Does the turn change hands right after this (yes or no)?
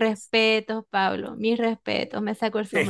yes